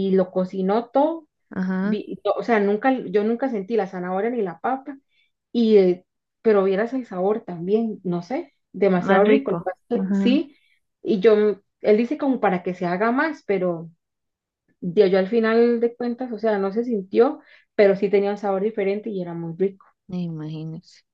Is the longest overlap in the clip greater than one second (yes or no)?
yes